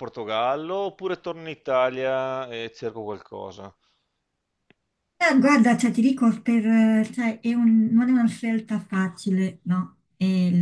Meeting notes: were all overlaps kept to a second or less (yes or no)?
yes